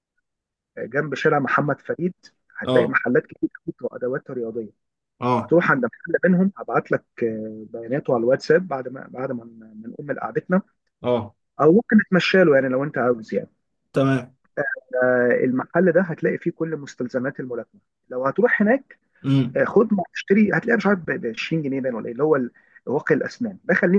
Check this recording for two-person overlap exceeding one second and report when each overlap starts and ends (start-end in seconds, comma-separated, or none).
none